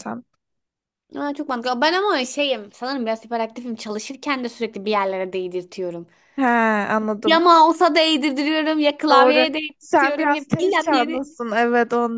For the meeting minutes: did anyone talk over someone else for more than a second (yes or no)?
yes